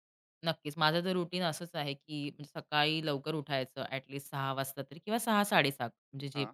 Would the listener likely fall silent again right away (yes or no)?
yes